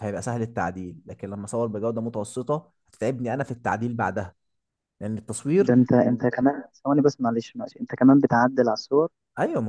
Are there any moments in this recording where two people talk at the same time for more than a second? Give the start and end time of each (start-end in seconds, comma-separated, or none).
none